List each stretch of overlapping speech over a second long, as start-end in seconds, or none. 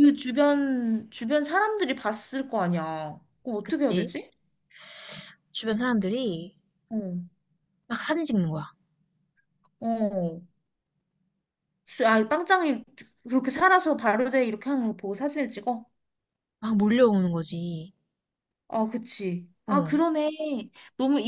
none